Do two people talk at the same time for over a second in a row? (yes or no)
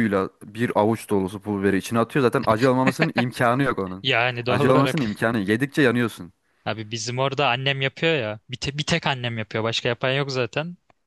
no